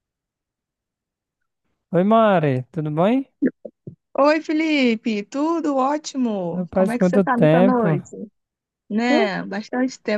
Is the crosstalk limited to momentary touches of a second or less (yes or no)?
no